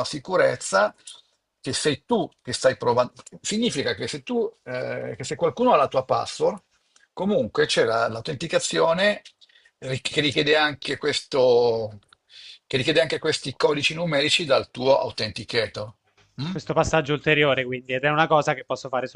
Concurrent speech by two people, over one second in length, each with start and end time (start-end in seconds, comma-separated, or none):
none